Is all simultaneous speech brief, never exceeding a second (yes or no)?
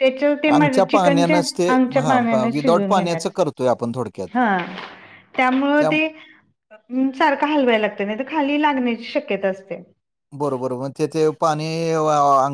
no